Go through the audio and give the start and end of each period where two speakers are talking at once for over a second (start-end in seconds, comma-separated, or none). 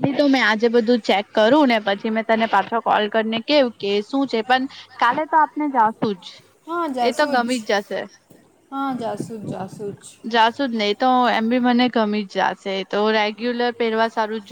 none